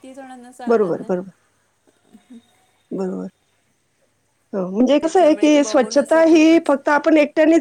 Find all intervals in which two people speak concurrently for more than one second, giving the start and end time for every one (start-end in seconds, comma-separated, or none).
5.0-6.7